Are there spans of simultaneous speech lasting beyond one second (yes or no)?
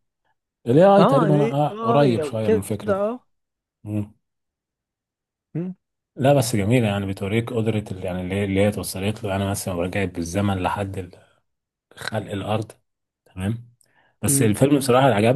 yes